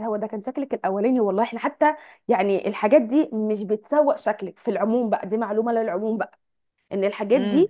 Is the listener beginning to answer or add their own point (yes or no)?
no